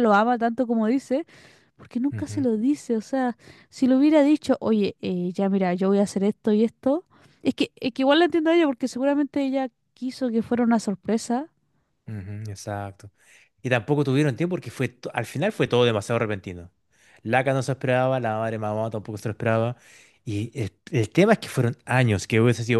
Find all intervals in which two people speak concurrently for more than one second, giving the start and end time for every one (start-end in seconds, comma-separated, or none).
none